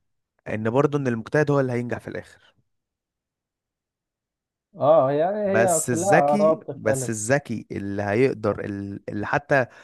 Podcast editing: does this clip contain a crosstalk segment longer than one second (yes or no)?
yes